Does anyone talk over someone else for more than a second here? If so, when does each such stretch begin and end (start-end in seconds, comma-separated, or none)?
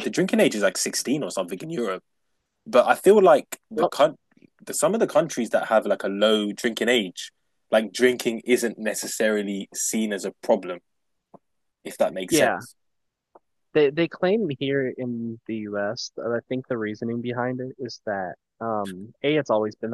none